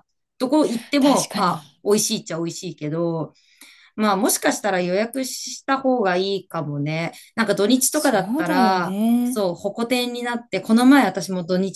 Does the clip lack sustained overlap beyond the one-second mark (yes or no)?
no